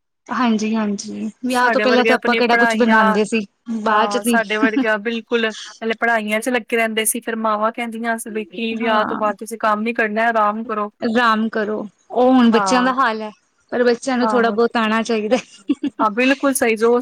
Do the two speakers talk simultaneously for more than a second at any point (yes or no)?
yes